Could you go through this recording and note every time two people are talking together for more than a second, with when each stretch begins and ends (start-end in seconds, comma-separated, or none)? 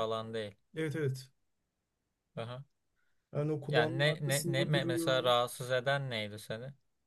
3.6-5.3